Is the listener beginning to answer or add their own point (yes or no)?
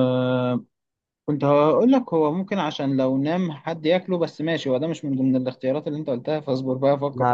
yes